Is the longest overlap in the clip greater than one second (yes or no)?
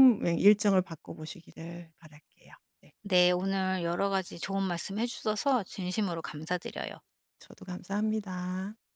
no